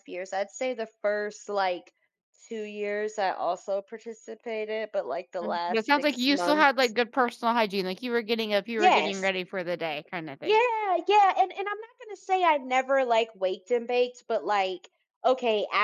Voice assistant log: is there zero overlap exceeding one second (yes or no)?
no